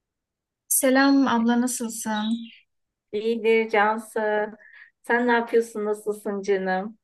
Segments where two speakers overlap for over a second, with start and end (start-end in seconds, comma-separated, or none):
none